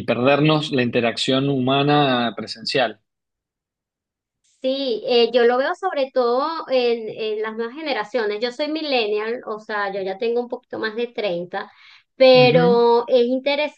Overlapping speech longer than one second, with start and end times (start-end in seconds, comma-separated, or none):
none